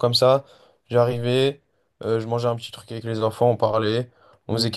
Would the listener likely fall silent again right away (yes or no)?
yes